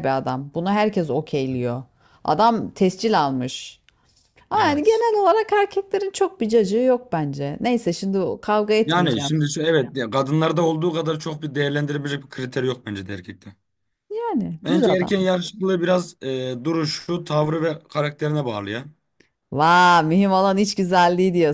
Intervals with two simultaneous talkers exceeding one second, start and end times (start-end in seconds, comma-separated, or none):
none